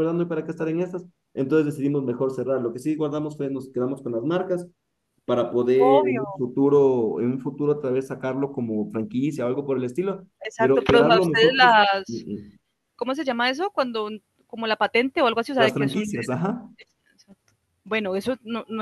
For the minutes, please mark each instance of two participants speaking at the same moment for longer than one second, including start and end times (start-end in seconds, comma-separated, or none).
10.4-12.3